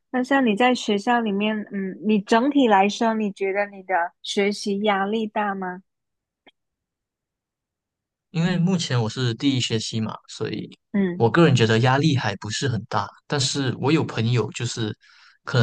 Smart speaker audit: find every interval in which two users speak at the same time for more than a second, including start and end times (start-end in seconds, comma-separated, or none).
none